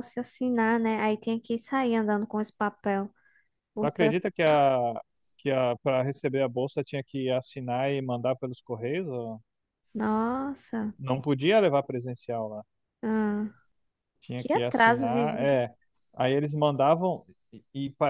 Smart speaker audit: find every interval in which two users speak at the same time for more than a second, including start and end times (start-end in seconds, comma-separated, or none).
14.4-15.6